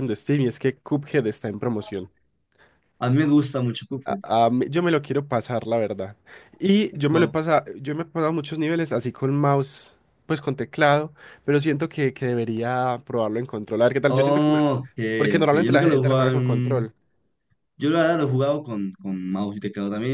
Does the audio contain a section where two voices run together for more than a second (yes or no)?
yes